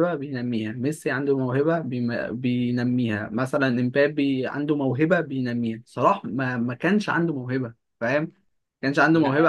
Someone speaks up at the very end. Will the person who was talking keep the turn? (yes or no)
no